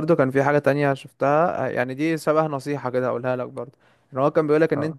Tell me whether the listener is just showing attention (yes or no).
yes